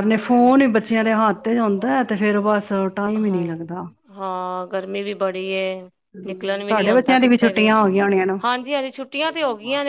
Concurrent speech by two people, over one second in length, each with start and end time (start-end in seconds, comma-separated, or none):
6.3-7.7